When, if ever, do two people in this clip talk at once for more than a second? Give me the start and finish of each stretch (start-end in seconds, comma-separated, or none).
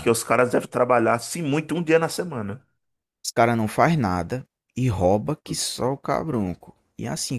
none